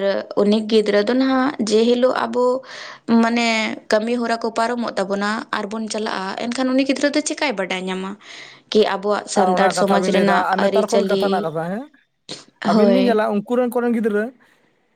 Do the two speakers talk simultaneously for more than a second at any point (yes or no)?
yes